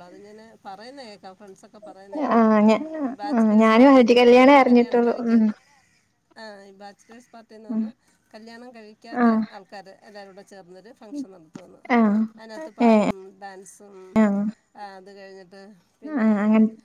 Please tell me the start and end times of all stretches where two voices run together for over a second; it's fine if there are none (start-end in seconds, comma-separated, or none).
3.4-5.4